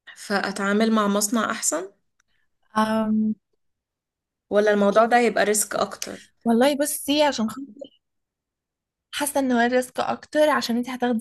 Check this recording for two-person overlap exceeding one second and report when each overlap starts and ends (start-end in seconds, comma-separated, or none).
none